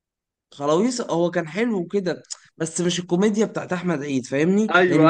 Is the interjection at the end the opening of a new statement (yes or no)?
yes